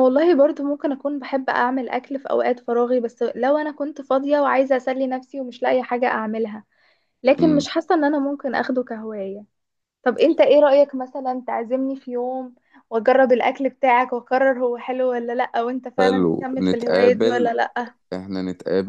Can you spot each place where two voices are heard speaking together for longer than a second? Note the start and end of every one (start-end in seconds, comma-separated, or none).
16.0-17.5